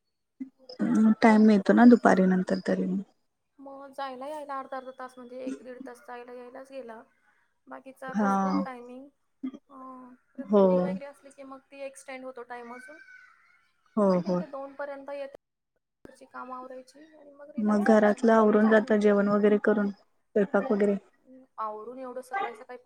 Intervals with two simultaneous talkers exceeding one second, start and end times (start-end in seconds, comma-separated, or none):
17.7-19.1